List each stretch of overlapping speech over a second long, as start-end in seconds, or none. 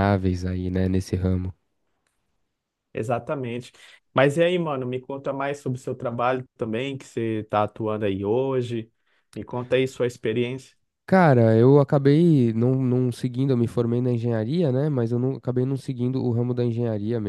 none